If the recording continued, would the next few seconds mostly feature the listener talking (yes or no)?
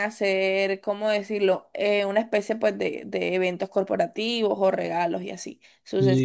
yes